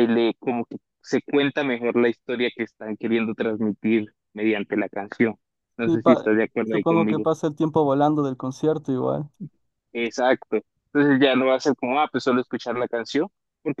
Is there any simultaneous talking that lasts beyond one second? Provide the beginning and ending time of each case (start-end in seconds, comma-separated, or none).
5.8-7.3